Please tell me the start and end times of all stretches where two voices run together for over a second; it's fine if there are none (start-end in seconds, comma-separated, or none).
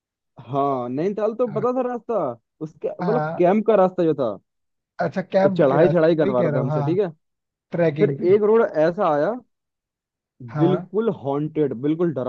5.4-7.0